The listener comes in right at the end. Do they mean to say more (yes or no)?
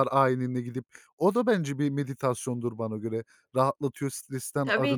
yes